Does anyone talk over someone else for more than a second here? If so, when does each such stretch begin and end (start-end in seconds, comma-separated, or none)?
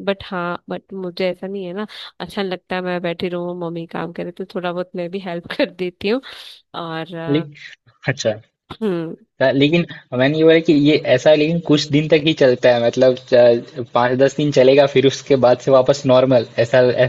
none